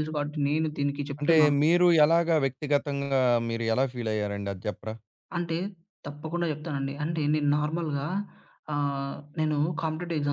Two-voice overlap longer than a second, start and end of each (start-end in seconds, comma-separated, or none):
none